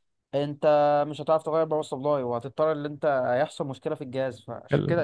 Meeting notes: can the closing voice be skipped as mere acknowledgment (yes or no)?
yes